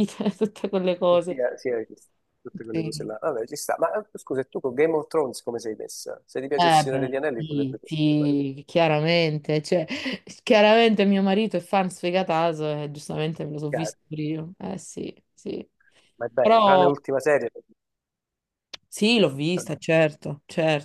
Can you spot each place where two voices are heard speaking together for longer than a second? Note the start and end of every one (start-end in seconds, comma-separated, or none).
6.5-8.3